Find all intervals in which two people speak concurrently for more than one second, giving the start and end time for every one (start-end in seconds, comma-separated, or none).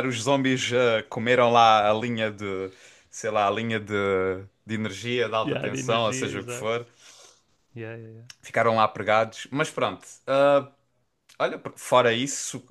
5.4-6.7